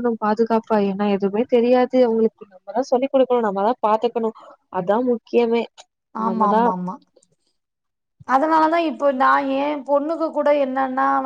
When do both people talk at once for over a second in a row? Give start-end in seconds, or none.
none